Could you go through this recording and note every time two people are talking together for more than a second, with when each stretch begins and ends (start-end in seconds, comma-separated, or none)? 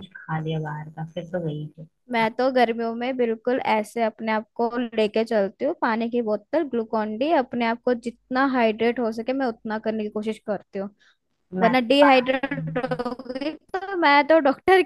11.6-12.9